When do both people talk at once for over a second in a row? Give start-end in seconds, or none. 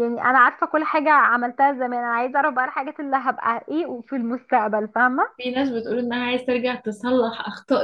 none